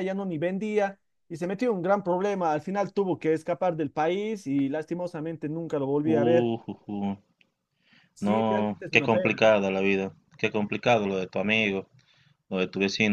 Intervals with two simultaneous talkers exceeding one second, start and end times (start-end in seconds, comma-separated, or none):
8.2-9.4